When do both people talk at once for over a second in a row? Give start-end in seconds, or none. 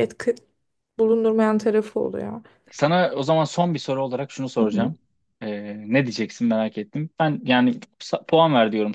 none